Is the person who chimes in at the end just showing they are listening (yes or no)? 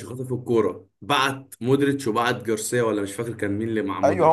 no